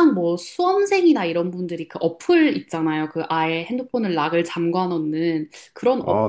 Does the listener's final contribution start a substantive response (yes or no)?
no